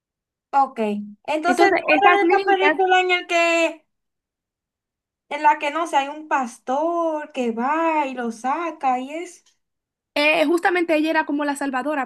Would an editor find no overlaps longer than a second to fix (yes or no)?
no